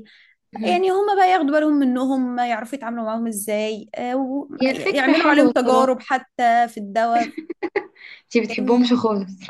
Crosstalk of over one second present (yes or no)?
yes